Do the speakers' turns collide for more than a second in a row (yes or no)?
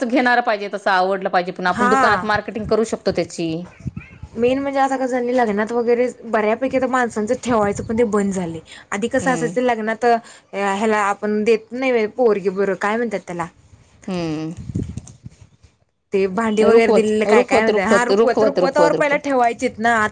yes